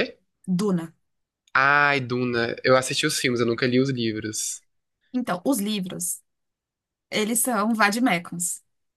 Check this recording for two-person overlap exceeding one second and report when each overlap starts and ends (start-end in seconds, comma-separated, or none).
none